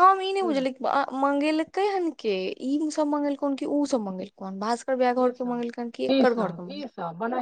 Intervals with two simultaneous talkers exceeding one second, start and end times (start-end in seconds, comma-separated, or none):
5.3-6.6